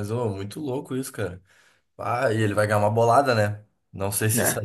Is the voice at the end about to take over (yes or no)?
no